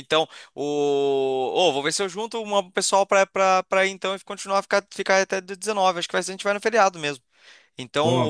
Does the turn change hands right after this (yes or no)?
no